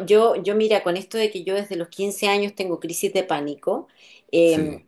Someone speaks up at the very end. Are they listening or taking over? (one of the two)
listening